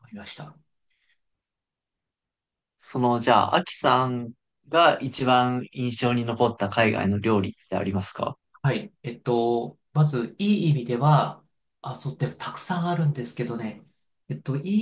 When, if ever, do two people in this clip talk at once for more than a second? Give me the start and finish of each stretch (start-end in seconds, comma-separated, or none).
none